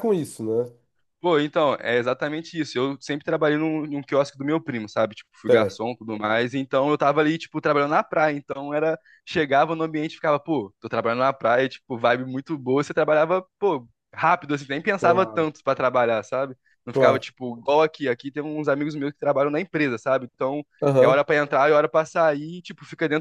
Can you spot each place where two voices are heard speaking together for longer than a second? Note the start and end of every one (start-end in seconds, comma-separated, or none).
none